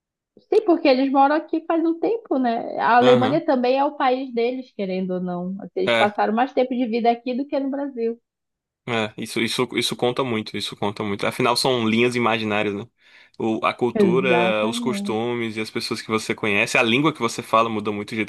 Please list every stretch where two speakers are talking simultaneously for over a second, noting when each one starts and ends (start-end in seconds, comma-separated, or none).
13.9-15.2